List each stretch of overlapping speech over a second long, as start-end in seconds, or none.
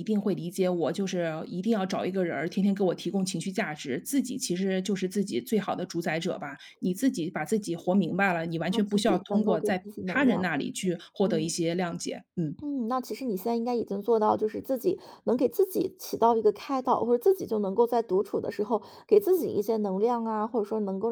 8.7-10.5